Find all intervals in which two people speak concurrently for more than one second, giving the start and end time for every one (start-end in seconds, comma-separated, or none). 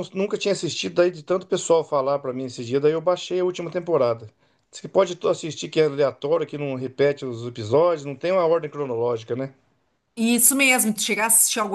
none